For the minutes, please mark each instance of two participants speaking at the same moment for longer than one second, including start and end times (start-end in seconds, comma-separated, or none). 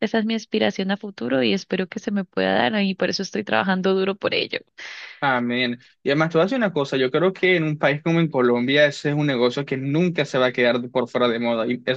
none